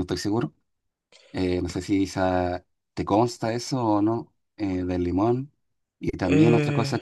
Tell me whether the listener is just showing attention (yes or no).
yes